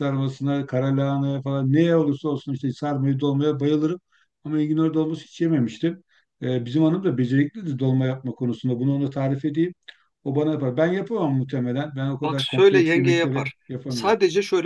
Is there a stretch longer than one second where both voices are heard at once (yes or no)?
yes